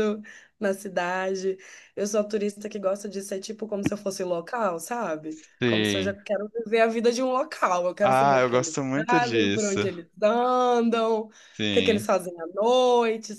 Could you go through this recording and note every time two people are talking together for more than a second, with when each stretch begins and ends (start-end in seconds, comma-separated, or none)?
8.0-9.8